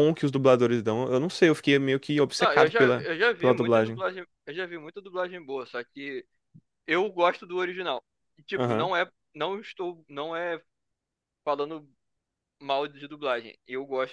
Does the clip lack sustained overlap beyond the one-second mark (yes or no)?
no